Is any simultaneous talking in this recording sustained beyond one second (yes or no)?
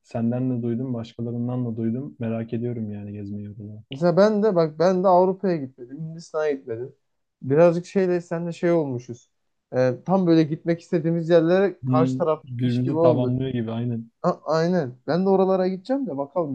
yes